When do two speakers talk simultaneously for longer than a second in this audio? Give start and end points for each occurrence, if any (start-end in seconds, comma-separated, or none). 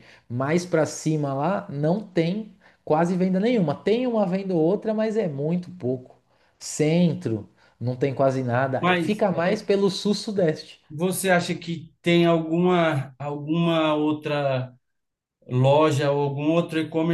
none